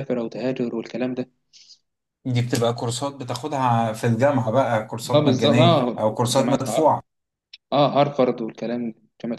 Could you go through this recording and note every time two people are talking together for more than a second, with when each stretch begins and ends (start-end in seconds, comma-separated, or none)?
5.1-7.0